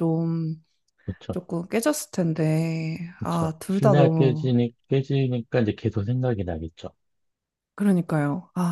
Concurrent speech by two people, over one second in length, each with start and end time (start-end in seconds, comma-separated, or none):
3.2-4.5